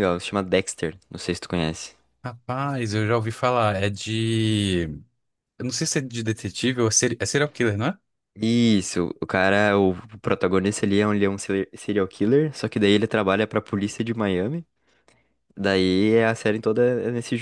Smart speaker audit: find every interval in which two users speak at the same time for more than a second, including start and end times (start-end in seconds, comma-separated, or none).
none